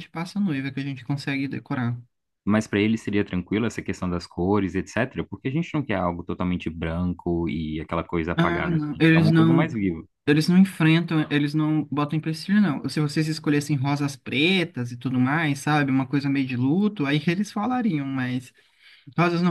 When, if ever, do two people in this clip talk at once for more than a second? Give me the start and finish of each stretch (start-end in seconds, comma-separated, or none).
8.4-9.8